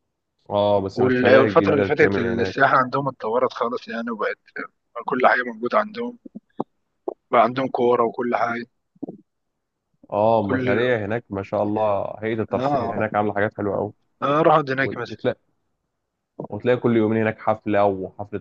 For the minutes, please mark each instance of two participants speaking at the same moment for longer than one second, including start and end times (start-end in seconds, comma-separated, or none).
0.9-2.6